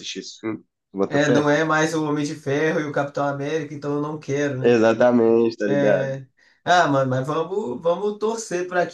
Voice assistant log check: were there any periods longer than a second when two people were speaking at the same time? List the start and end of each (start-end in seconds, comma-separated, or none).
none